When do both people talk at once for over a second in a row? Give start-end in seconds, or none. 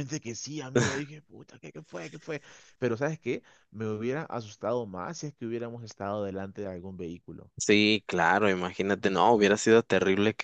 none